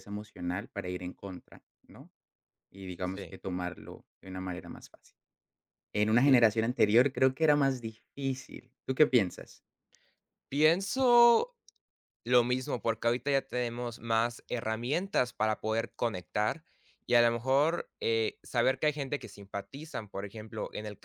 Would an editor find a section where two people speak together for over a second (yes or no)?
no